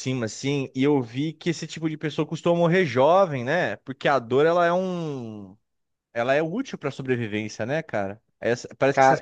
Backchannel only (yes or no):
yes